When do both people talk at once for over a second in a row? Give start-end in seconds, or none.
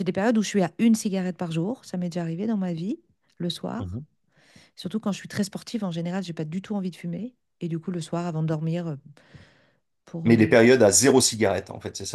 none